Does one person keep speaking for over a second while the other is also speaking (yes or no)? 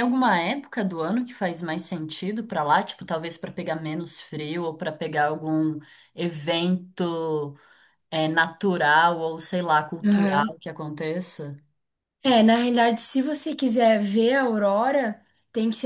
no